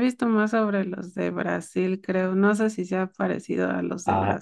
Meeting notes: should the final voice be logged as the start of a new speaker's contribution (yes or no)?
yes